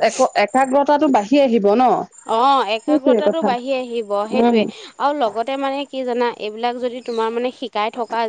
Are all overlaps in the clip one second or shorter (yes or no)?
yes